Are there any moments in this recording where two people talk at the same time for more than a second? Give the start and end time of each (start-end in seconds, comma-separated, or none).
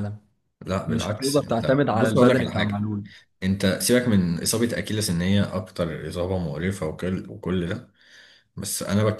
0.9-2.9